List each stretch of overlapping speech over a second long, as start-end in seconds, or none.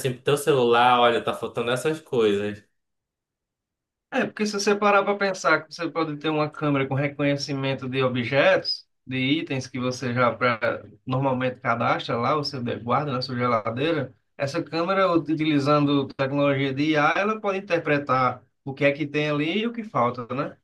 none